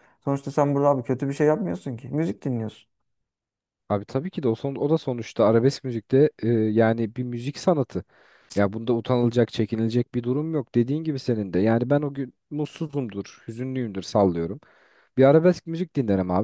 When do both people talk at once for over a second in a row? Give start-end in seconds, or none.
none